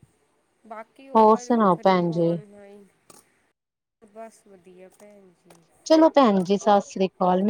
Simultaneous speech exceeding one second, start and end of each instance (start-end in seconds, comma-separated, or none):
1.2-2.4